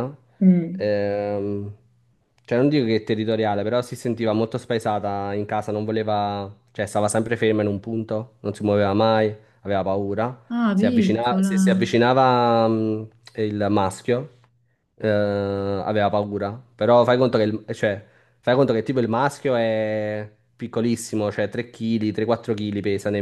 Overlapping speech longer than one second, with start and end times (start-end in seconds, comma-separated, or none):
10.5-12.0